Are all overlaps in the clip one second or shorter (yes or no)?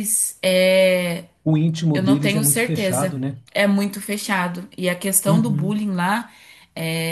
no